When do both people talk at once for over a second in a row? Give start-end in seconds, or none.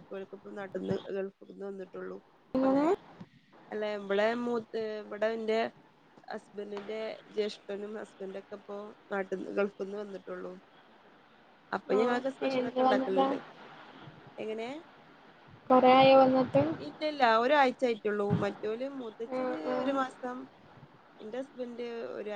12.0-13.2